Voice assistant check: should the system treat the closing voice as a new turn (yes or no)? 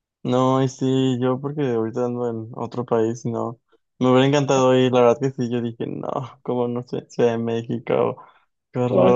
yes